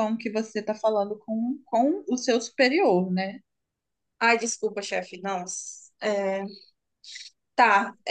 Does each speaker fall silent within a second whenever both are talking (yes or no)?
yes